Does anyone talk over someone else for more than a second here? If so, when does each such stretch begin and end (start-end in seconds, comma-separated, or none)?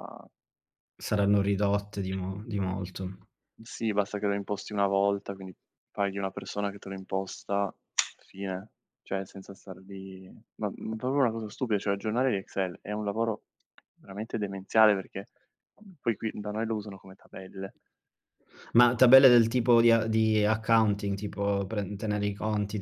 none